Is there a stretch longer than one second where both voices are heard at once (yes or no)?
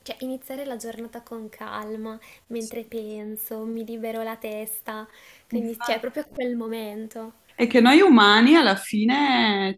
no